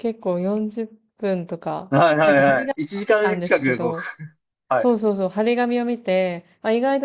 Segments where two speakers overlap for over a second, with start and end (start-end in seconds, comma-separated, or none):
1.9-3.9